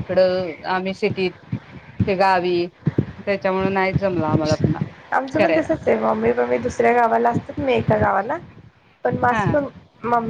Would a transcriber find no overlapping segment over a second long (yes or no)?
yes